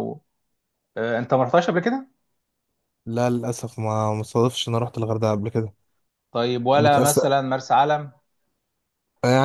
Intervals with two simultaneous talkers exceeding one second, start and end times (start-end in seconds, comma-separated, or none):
none